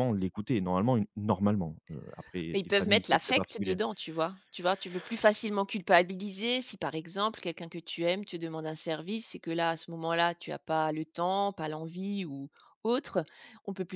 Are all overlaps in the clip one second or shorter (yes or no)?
no